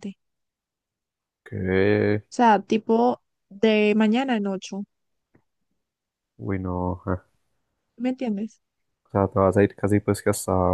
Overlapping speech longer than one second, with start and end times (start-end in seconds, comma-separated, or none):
none